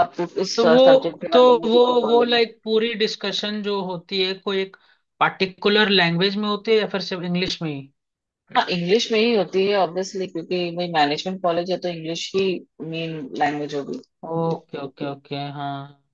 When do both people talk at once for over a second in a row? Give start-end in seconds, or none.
0.6-2.4